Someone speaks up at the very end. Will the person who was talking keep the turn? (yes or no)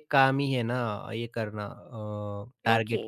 no